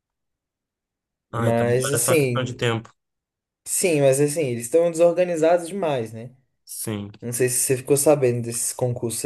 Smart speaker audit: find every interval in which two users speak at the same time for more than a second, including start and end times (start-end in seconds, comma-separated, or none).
1.3-2.6